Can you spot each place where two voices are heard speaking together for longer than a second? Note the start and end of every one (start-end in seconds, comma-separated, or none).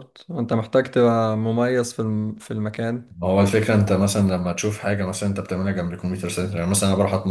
none